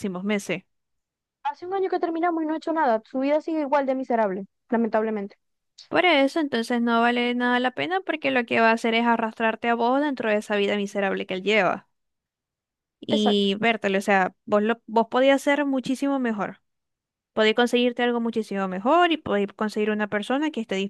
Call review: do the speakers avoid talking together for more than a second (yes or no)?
yes